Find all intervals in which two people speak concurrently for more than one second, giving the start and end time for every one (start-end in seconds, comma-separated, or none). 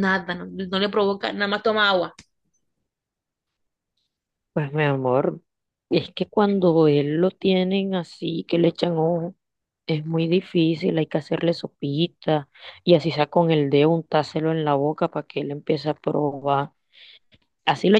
none